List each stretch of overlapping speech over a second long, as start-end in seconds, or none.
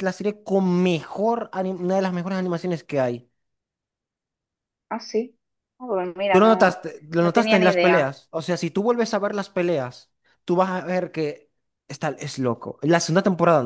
6.3-8.2